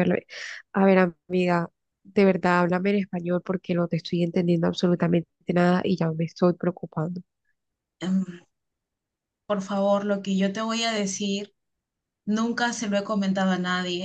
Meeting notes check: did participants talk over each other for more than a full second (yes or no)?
no